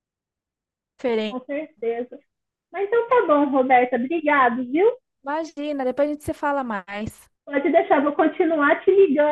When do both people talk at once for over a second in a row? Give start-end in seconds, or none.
none